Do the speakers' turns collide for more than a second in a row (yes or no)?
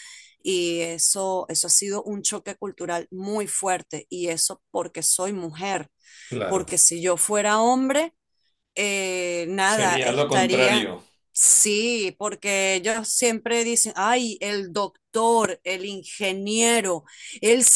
yes